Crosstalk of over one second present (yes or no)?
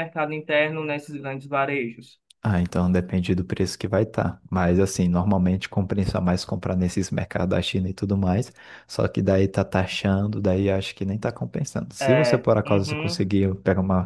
yes